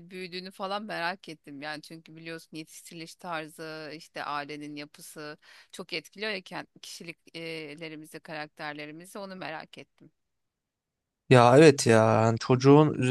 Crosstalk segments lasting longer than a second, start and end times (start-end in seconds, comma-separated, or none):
none